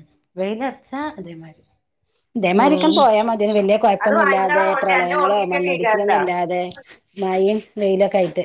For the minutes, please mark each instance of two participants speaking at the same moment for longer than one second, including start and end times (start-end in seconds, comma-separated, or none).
4.0-6.1